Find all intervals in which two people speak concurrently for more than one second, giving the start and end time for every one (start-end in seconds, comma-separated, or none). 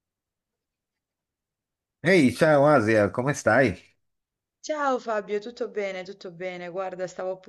none